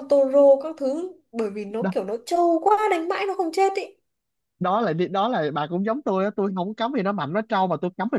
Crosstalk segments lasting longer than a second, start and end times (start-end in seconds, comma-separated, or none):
none